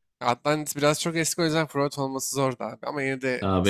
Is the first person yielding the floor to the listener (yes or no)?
no